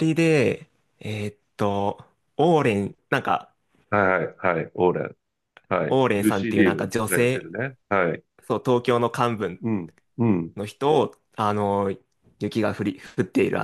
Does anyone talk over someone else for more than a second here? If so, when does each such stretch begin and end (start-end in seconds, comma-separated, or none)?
5.9-7.5